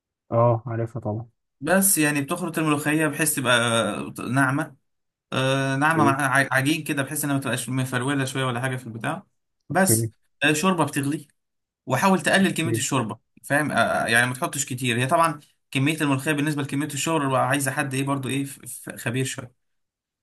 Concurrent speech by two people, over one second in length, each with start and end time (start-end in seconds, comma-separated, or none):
none